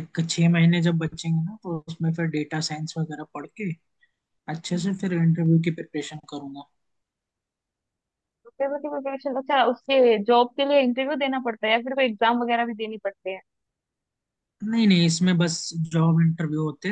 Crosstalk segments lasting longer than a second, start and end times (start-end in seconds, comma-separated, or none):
none